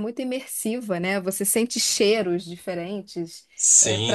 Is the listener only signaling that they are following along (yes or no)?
no